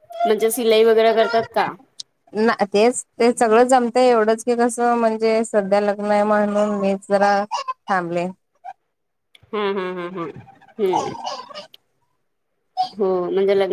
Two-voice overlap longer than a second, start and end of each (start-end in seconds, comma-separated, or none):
none